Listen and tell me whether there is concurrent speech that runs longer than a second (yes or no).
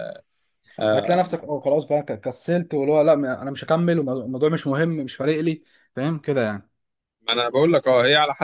no